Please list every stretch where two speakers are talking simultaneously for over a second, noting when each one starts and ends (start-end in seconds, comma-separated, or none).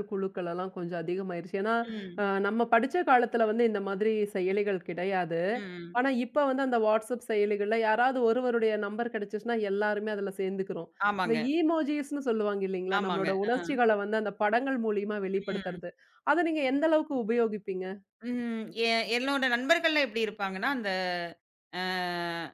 none